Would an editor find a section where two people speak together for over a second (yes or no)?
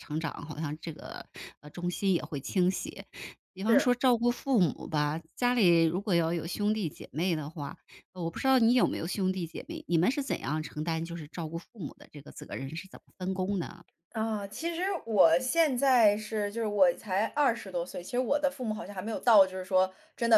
no